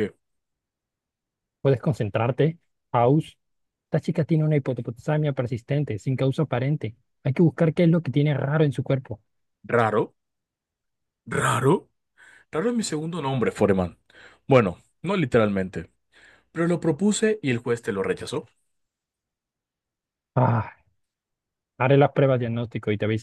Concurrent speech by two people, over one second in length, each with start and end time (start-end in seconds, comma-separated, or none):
none